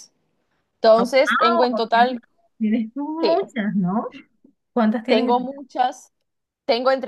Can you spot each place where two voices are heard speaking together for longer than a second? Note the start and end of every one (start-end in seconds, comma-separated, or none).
1.0-2.2